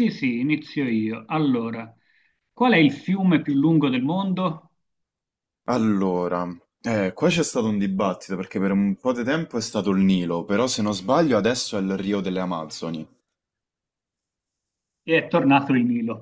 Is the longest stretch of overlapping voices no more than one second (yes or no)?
yes